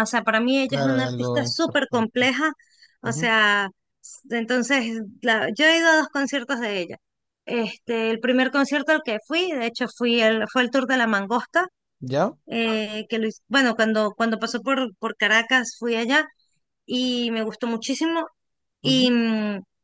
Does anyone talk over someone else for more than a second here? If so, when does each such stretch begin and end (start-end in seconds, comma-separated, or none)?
0.7-2.3